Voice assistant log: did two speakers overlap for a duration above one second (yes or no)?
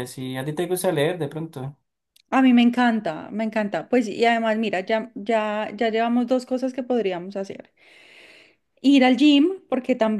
no